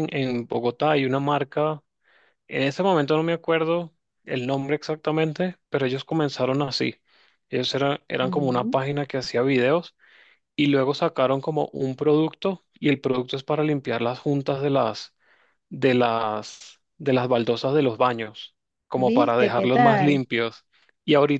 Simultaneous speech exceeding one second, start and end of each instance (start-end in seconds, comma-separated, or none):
18.9-20.2